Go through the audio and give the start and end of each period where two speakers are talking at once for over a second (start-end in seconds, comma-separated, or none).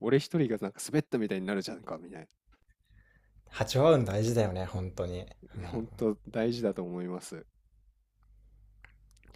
none